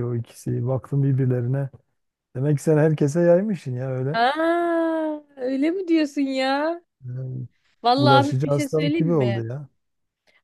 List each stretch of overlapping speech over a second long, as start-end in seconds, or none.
8.0-9.4